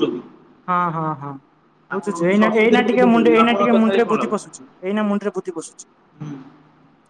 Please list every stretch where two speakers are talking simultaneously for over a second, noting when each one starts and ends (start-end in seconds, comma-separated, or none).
2.3-4.3